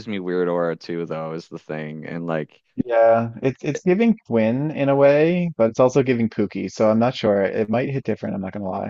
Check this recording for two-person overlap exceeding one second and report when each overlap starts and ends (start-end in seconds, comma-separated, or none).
none